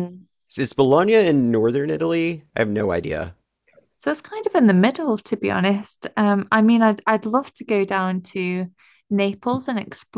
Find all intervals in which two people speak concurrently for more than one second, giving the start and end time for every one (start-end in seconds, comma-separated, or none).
none